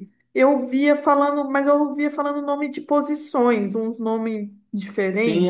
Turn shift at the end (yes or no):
yes